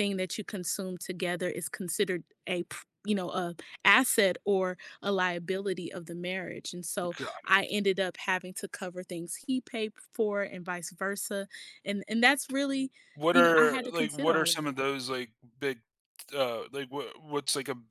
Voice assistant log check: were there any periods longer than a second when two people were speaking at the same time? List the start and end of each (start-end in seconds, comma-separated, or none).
13.3-14.8